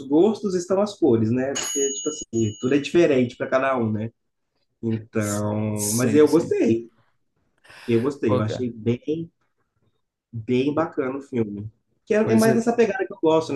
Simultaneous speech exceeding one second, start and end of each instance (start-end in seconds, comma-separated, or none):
5.2-6.5